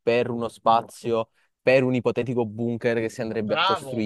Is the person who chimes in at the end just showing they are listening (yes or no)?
no